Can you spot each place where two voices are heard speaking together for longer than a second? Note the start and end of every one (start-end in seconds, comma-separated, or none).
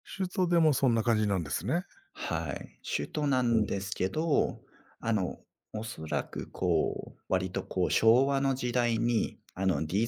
none